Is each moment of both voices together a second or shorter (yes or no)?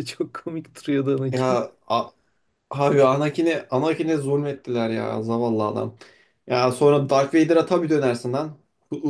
yes